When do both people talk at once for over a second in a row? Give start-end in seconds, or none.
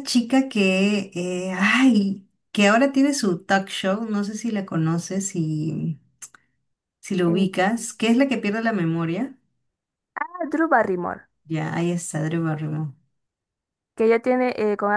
none